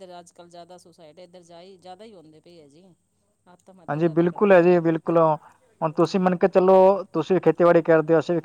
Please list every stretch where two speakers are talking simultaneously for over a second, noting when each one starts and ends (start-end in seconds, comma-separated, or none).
3.9-5.2